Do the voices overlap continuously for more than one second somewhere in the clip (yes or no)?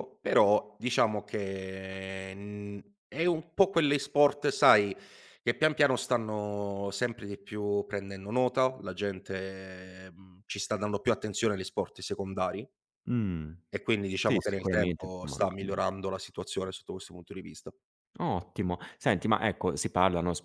yes